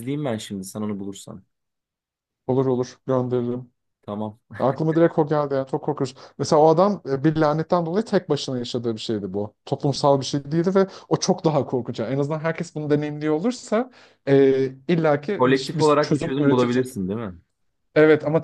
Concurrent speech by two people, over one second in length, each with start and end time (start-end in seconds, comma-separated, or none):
15.4-16.9